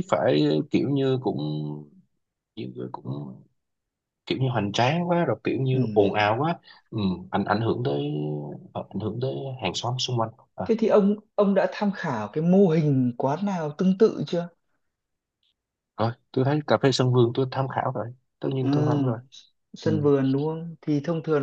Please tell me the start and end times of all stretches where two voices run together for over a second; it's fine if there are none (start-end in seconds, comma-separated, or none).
none